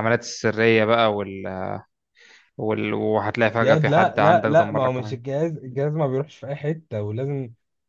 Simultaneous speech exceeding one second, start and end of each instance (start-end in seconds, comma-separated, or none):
3.6-5.2